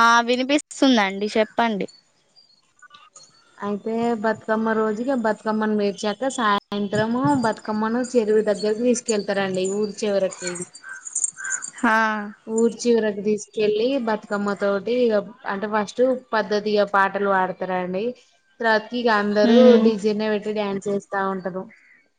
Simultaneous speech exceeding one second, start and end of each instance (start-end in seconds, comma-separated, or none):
none